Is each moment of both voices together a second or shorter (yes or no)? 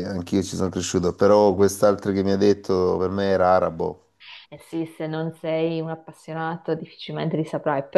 yes